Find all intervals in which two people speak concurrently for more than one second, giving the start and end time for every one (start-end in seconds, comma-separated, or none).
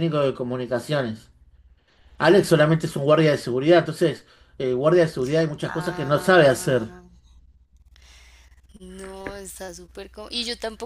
5.6-6.9